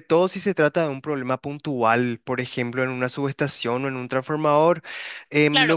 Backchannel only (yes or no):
no